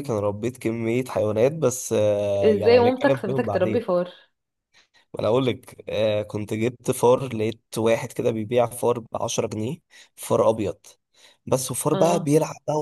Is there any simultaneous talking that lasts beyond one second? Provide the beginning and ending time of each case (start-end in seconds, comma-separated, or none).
2.4-3.8